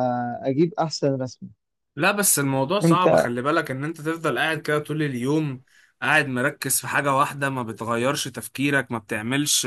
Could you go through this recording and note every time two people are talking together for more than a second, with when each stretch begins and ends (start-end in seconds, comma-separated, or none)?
none